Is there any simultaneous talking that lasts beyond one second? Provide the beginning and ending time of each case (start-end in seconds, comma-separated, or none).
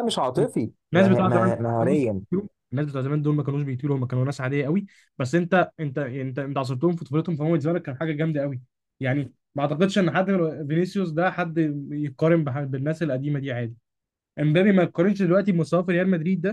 0.9-2.2